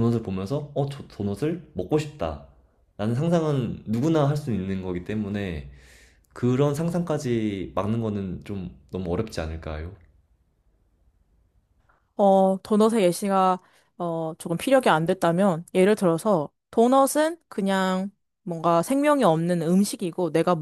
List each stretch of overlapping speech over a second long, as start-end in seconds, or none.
none